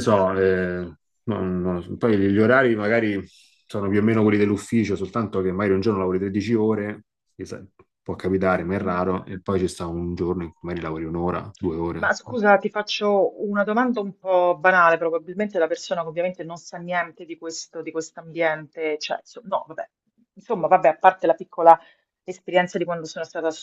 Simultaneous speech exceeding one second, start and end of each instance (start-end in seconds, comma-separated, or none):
none